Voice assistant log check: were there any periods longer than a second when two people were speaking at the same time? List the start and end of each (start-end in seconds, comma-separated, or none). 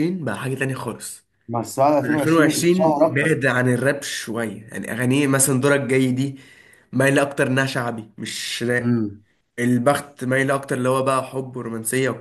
2.0-3.4